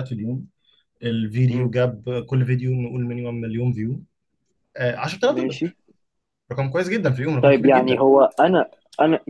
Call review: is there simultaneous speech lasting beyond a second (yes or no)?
no